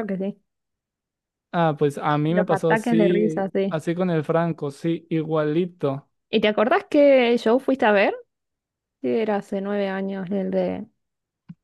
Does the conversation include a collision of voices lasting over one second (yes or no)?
yes